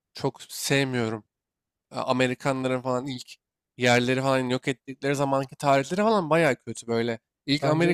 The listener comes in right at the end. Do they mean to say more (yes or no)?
no